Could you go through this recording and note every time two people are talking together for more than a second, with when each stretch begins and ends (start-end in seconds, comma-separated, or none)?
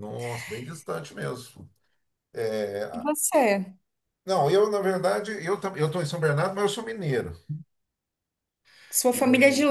none